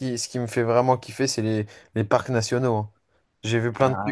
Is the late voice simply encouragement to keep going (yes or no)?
yes